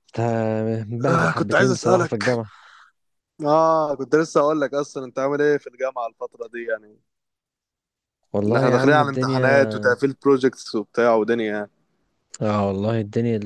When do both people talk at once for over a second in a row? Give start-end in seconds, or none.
1.1-2.4, 8.5-9.8